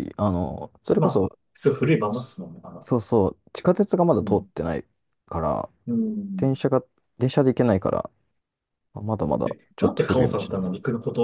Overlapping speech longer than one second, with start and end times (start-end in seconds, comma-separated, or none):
9.2-10.7